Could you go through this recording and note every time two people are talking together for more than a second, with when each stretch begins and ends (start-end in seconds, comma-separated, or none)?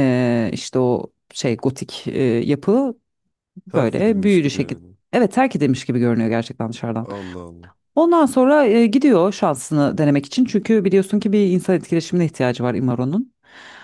3.7-5.0